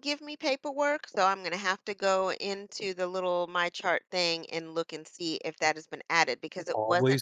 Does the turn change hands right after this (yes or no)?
yes